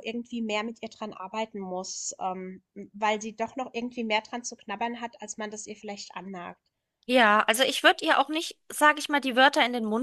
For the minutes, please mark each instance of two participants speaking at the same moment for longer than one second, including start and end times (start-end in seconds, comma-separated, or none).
none